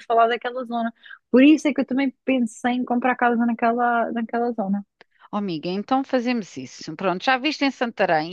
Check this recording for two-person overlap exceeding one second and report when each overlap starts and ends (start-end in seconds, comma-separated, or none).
none